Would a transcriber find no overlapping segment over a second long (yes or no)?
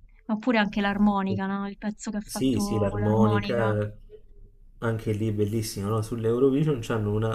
no